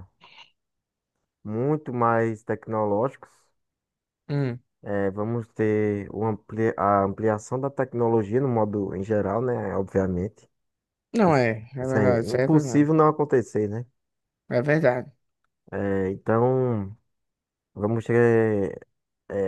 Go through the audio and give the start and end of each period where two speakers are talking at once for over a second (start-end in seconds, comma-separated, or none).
11.2-12.9